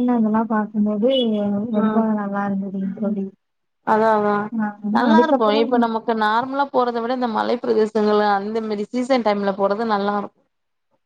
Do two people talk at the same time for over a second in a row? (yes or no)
no